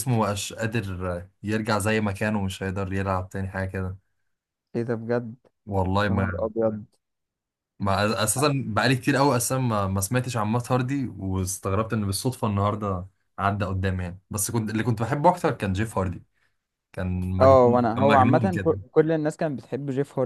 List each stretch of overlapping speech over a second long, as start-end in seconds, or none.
17.4-18.8